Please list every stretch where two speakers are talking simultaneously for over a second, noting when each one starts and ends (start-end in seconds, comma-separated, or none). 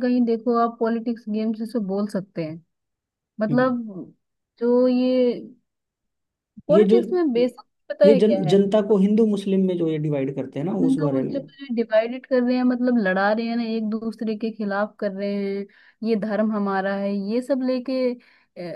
none